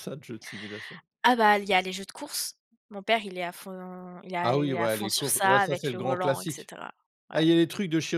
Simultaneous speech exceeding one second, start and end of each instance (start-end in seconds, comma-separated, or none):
4.4-6.7